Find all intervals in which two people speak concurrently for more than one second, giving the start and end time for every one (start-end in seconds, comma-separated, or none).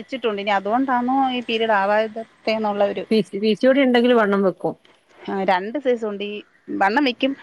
none